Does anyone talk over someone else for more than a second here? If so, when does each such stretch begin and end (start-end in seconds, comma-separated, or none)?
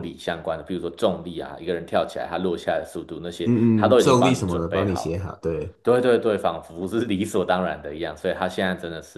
3.5-5.3